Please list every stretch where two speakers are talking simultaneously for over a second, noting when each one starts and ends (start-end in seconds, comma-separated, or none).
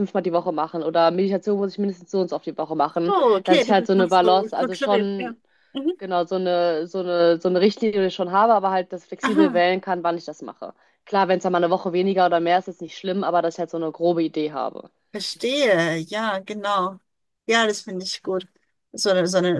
3.1-5.3